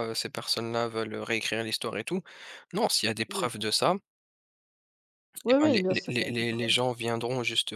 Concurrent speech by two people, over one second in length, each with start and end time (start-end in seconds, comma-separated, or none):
5.5-6.8